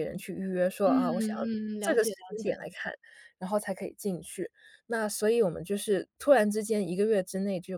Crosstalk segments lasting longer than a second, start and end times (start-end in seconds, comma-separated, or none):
0.8-2.6